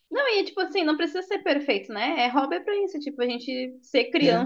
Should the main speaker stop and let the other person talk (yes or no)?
no